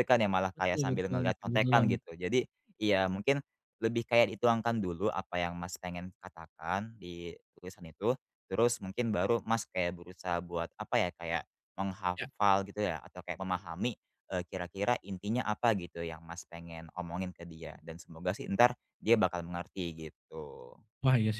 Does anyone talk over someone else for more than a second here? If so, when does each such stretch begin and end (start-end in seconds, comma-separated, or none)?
0.6-2.0